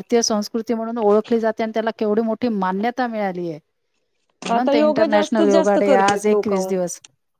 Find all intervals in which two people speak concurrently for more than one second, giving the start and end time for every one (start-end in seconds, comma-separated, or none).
4.5-6.7